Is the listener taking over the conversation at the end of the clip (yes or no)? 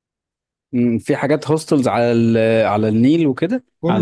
yes